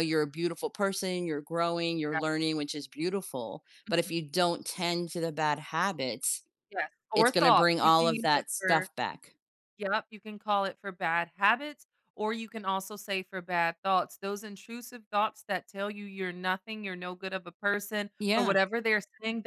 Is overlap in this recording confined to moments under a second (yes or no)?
no